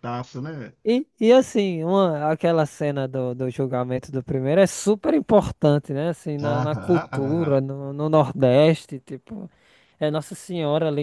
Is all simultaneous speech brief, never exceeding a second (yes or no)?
no